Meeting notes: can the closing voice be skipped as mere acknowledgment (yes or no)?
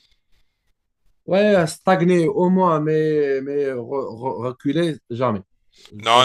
no